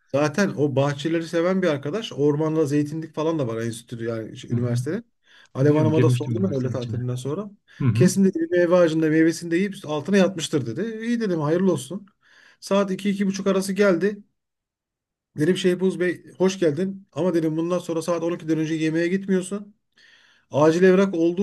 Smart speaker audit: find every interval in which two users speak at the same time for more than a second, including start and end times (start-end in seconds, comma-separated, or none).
5.6-7.0